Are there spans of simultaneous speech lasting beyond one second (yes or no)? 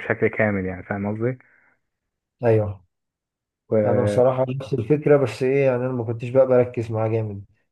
no